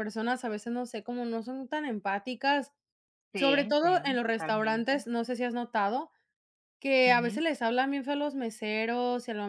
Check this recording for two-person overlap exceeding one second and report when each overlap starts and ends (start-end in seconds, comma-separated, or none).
3.4-5.0